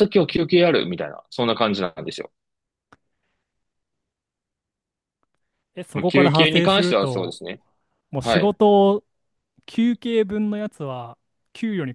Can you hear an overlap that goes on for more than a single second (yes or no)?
yes